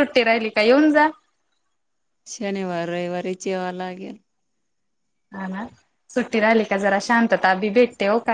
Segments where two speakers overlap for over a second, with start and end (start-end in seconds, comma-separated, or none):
none